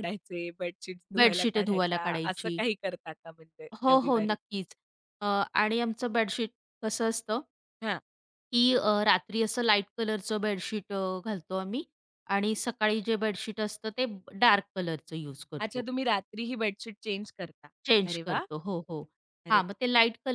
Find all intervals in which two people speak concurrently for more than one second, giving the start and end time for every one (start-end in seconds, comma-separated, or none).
1.2-2.6